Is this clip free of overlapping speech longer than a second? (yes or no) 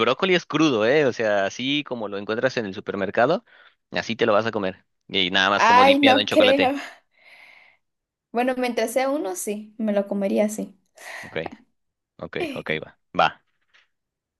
no